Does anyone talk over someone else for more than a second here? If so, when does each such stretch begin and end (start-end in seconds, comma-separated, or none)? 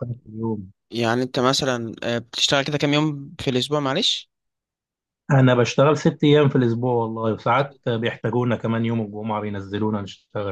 none